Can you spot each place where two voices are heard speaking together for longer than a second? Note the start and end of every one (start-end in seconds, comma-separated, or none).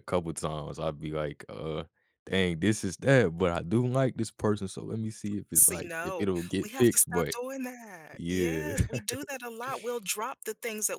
5.5-7.3